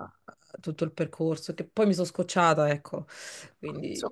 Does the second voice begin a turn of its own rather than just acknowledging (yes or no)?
yes